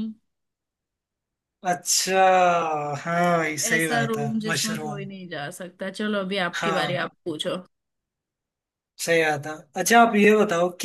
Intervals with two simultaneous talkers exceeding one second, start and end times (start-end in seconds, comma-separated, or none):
3.7-5.1